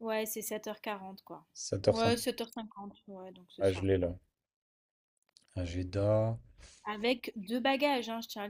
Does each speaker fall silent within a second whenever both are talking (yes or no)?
yes